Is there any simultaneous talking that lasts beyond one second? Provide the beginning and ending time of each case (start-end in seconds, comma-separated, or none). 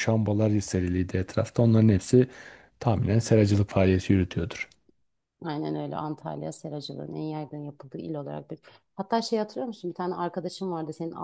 none